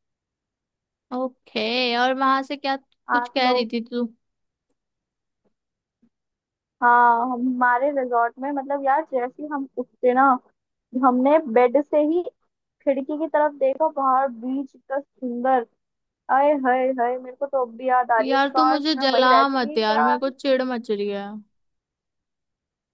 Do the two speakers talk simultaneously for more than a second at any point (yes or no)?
yes